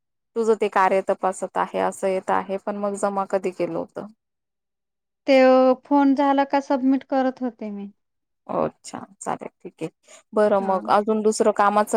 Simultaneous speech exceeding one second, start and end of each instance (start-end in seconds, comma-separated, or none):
none